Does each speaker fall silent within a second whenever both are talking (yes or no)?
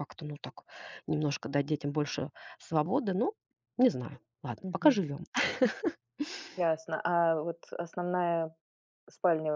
yes